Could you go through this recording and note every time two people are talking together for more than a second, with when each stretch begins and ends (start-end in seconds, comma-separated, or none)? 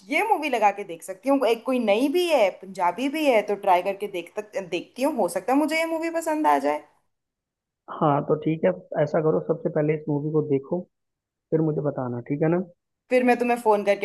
none